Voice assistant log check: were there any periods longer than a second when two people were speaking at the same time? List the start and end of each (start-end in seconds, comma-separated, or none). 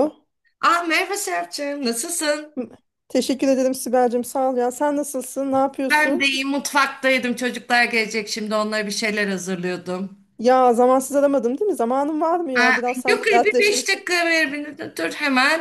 12.6-13.9